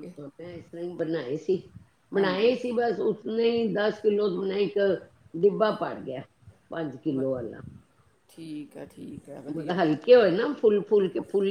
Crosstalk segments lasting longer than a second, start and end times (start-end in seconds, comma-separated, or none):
none